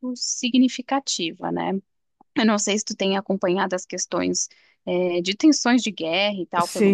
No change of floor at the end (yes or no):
no